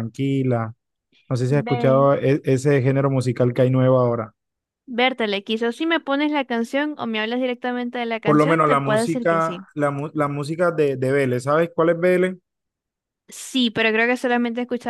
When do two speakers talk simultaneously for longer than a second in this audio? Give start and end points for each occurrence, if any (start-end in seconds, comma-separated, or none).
8.2-9.7